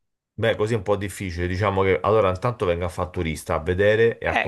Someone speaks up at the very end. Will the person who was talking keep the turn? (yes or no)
no